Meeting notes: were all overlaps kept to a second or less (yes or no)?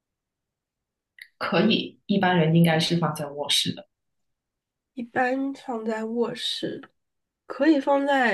yes